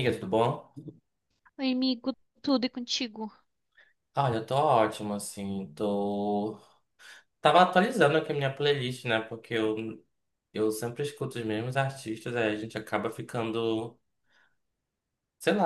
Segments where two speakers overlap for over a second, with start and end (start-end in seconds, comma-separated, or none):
none